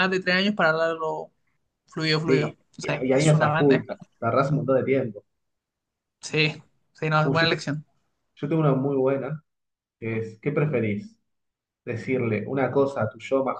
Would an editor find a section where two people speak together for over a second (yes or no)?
yes